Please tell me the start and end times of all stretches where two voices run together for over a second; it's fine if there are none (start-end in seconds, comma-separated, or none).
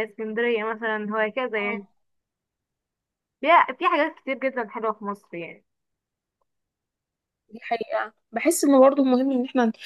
none